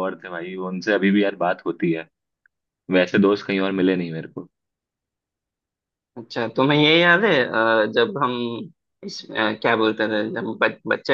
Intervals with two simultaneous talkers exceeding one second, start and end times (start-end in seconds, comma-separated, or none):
none